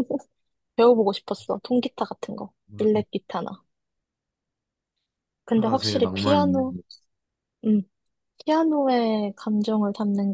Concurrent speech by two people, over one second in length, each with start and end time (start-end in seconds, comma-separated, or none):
5.5-6.8